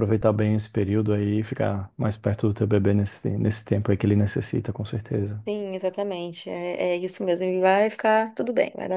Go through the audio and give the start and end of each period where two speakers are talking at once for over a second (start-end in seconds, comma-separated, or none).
none